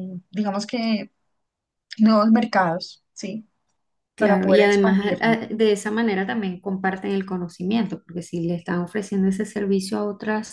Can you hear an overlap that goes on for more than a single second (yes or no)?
yes